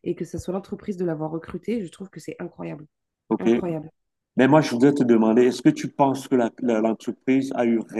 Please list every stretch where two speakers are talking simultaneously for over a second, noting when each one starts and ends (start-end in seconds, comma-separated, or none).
none